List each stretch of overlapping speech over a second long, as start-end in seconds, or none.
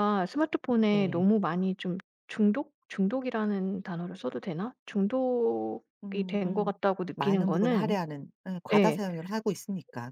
6.0-8.0